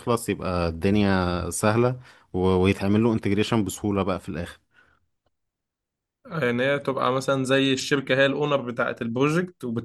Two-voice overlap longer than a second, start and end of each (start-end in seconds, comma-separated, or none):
none